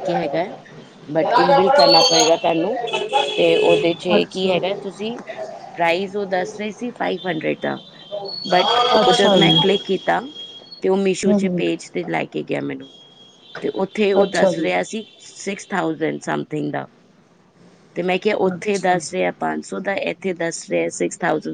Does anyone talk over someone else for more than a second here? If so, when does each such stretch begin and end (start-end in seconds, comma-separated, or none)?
none